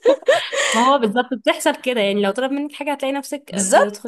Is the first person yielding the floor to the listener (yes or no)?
yes